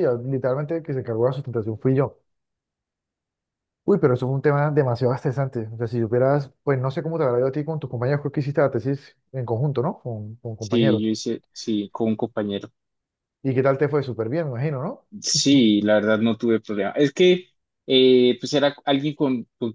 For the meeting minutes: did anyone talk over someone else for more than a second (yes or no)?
no